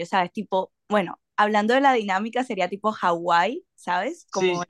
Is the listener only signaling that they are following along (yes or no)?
no